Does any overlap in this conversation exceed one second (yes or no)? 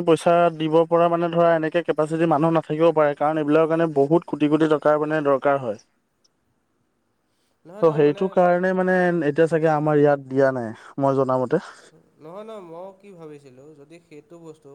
no